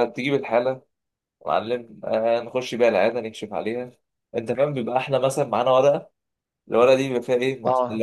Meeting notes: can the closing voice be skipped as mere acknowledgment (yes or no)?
yes